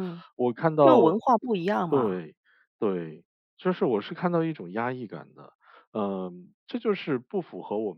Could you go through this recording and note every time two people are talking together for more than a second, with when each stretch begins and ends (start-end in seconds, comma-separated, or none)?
none